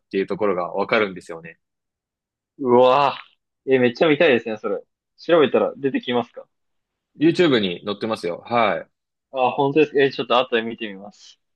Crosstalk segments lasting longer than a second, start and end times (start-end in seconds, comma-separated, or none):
none